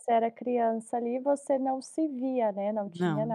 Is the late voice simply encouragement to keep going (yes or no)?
yes